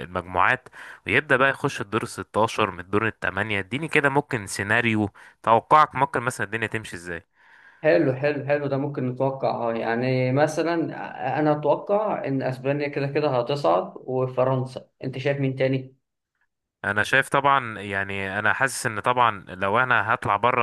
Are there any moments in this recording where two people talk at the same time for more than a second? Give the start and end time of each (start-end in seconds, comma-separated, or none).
none